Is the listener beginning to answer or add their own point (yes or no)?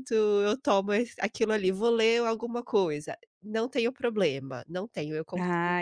yes